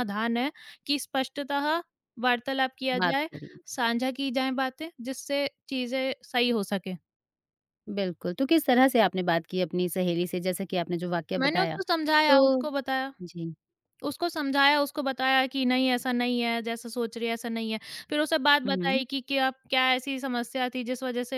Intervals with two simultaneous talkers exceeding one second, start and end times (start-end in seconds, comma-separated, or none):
11.4-12.6